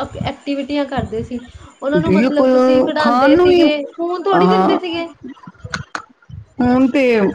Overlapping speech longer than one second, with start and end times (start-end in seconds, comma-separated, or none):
1.9-3.6